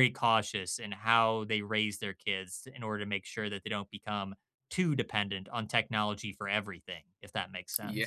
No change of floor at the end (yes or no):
no